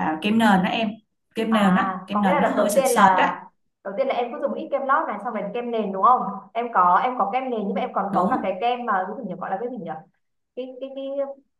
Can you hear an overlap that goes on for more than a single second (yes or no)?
yes